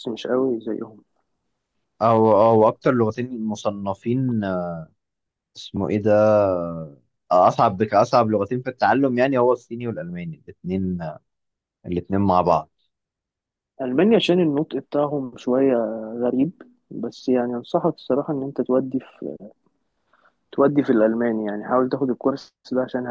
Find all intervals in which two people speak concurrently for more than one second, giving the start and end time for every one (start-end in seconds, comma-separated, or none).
none